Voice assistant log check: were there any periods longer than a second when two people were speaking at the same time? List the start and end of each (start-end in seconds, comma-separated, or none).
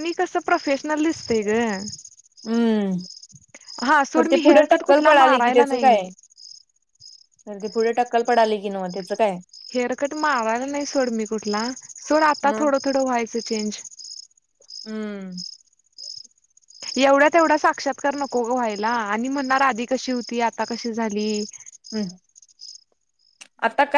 4.4-6.0